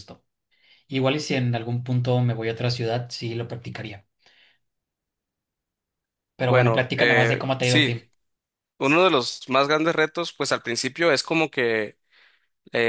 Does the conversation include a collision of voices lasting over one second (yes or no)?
yes